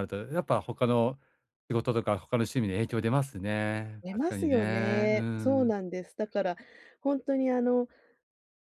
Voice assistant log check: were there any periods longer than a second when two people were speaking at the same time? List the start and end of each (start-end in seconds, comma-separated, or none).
4.0-5.7